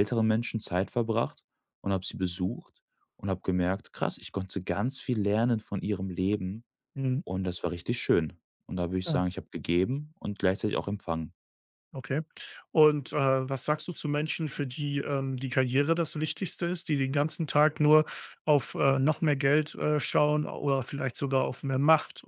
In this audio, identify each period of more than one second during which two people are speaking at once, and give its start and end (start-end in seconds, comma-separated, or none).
none